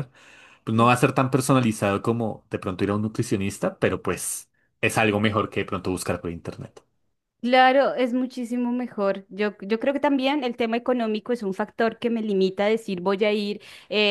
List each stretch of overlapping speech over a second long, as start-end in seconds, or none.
none